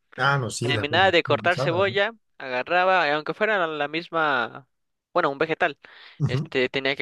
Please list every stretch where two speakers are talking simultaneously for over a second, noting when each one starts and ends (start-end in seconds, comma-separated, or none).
0.6-2.0